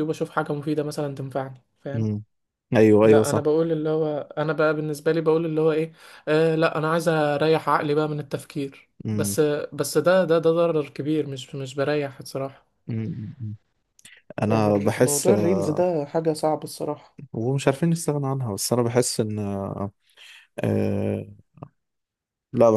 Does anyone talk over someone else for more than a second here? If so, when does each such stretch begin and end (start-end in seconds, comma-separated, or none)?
14.5-15.9